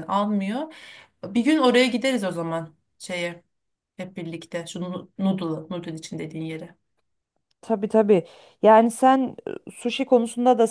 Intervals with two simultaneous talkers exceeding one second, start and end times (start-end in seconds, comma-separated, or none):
none